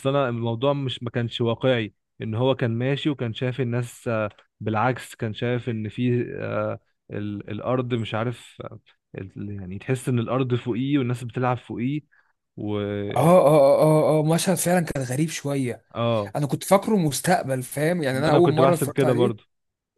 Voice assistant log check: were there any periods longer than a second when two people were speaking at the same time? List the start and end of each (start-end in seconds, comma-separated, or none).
18.1-19.4